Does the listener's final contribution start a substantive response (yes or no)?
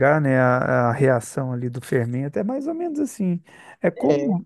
no